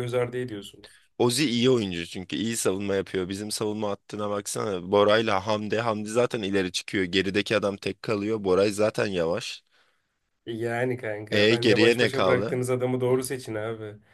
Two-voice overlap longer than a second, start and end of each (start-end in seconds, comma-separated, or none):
11.3-12.6